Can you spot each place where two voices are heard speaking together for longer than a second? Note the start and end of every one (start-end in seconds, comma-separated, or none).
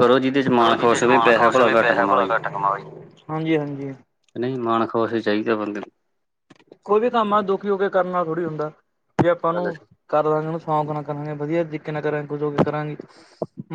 0.6-2.3